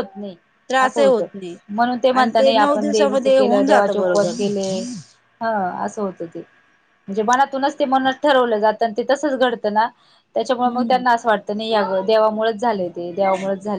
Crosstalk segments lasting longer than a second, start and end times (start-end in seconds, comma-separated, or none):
2.1-4.3